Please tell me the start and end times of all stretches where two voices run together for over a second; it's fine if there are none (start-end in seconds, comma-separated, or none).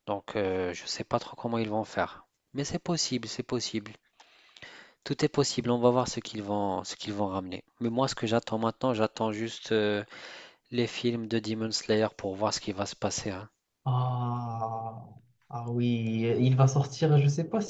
none